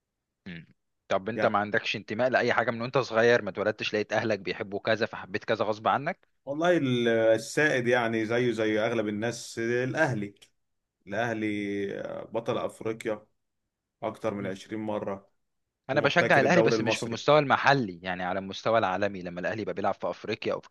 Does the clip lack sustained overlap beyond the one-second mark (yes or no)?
no